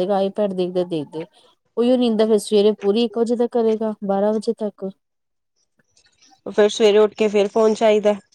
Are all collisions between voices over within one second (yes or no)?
yes